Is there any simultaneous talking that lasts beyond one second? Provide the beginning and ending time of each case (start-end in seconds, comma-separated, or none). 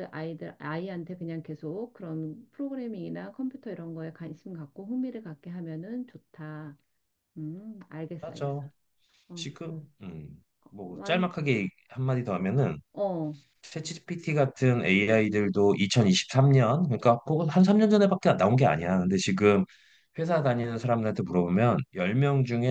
none